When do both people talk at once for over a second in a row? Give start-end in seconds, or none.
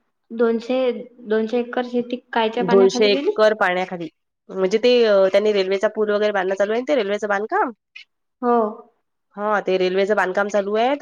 none